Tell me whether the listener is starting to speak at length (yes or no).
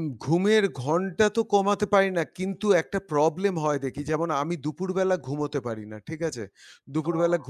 no